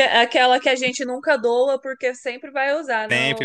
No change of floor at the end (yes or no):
no